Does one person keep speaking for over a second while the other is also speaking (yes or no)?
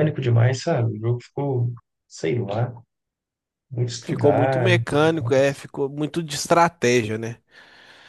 yes